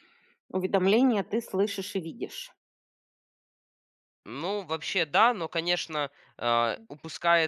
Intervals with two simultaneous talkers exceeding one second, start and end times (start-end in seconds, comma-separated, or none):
none